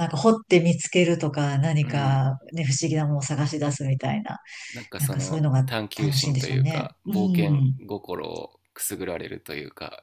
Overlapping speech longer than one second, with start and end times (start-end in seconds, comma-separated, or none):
5.0-7.8